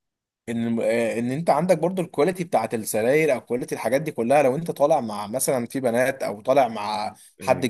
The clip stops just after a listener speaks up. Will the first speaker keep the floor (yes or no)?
yes